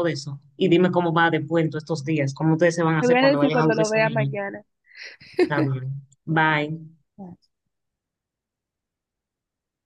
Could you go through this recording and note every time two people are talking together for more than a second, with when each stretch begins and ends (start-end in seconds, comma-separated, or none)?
3.0-4.3